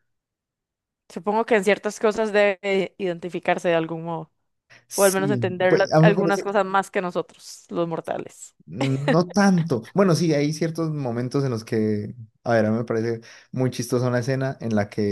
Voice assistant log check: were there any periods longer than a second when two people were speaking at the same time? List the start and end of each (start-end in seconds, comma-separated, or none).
4.9-6.5